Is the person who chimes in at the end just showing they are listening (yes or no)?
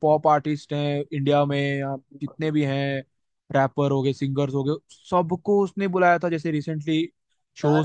no